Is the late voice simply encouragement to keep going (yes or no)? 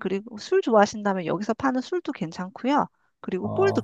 no